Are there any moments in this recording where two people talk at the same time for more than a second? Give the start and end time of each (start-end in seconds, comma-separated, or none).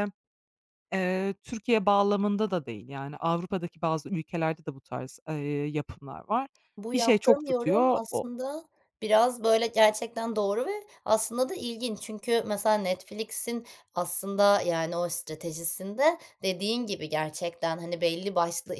6.9-8.3